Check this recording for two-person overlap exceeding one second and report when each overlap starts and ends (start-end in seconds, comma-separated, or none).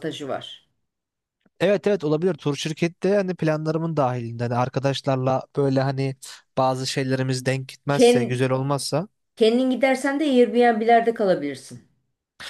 none